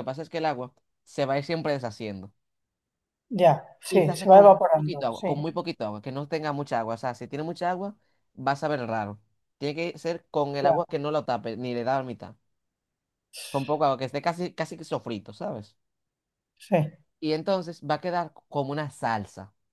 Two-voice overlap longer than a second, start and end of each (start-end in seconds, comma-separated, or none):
3.9-5.5